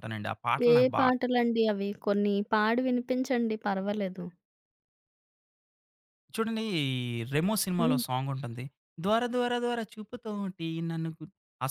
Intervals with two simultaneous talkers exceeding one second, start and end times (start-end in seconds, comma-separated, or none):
none